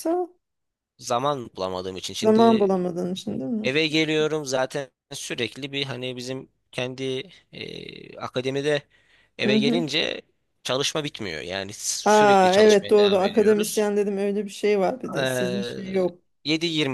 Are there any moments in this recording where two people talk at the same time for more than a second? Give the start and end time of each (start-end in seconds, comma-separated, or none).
12.1-13.8